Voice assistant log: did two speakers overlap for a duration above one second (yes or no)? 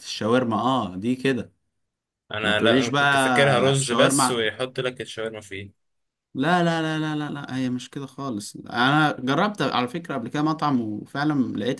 yes